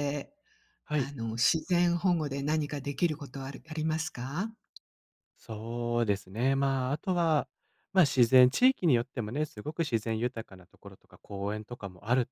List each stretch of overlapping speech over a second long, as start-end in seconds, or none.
none